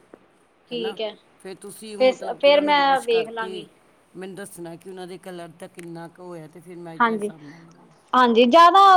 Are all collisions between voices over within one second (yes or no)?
no